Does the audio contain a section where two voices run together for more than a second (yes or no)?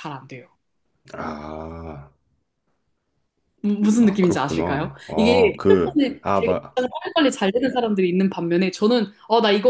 yes